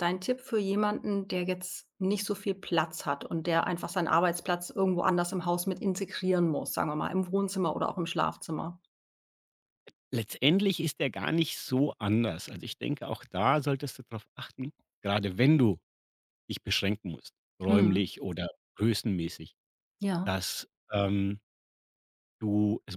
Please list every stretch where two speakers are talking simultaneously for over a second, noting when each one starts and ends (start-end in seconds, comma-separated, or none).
none